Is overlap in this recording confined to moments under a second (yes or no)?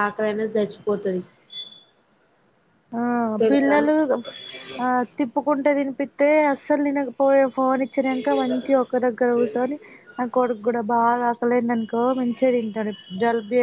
yes